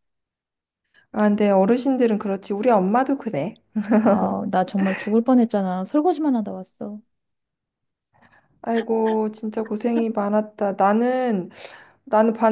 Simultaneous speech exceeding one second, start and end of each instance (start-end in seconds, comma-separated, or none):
none